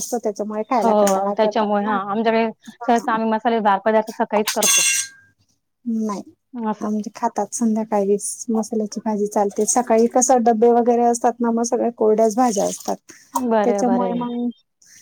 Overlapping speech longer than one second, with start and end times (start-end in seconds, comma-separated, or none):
none